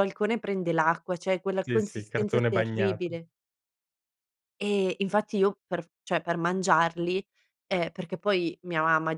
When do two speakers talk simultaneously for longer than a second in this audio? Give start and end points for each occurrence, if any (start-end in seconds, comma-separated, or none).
1.6-3.2